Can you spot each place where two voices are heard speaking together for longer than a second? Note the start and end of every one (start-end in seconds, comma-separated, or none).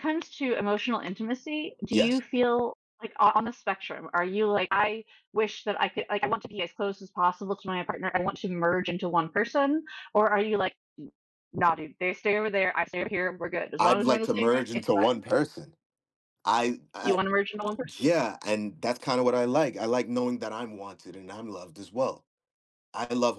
13.8-15.2